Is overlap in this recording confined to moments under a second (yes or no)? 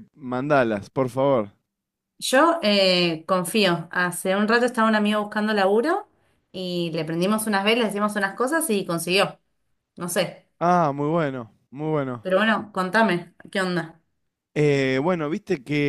yes